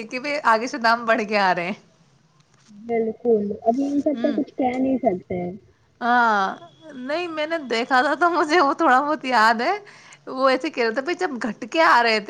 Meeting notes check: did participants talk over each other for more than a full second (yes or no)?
no